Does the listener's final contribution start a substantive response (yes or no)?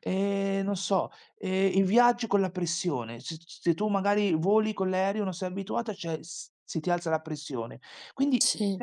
no